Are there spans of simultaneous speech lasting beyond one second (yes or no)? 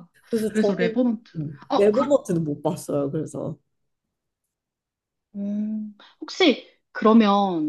yes